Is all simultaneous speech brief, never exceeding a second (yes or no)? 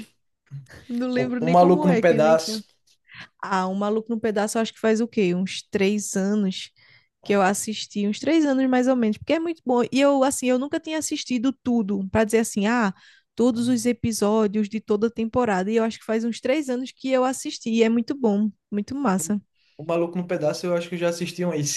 no